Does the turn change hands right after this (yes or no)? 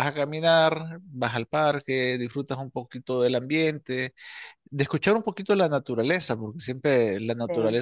no